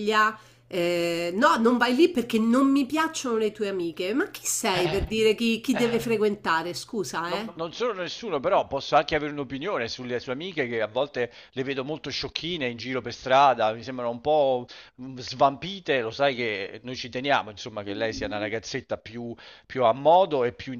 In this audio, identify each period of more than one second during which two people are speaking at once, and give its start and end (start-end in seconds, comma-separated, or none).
none